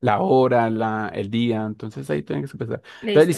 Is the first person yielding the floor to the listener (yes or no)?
no